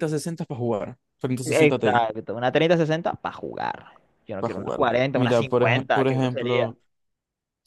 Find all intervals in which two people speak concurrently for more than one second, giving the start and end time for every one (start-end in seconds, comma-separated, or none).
4.4-6.7